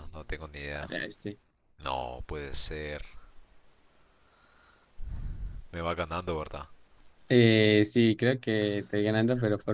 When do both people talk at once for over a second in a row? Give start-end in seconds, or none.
none